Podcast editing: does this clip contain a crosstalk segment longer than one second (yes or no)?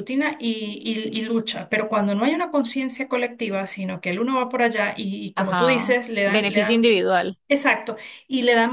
yes